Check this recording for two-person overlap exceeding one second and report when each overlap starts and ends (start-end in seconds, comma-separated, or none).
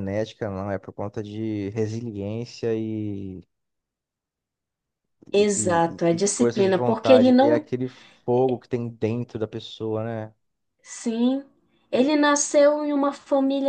5.5-7.7